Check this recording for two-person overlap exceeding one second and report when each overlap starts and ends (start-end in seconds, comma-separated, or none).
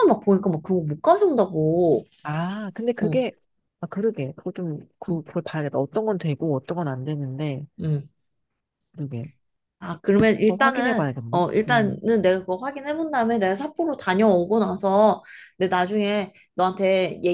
10.4-12.0